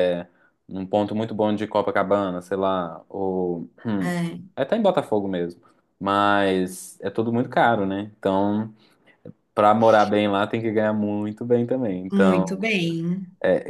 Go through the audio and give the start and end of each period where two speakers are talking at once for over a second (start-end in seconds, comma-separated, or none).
none